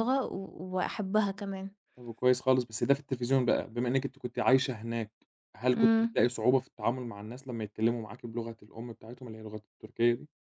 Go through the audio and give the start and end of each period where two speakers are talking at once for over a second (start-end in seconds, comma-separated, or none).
none